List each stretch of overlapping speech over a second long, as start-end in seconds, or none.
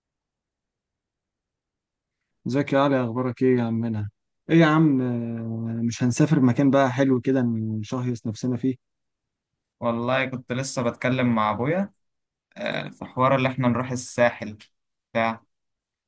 none